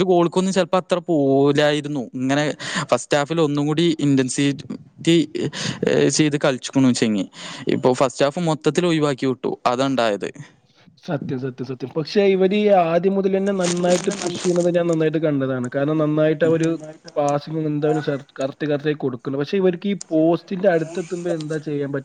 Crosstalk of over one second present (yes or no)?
no